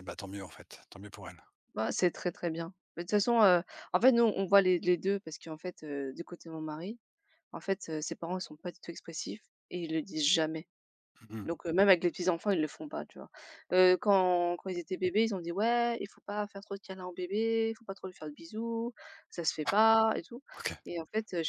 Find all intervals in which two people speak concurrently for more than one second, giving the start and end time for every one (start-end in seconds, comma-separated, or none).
none